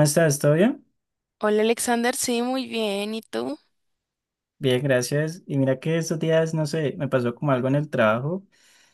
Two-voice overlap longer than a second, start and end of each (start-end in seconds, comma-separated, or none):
none